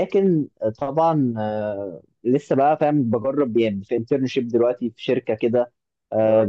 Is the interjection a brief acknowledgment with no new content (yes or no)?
yes